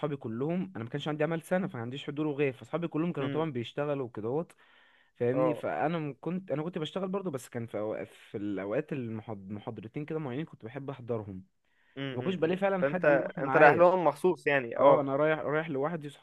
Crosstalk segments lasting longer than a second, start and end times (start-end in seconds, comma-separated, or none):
12.1-13.9